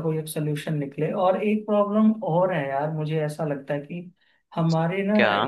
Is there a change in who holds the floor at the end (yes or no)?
no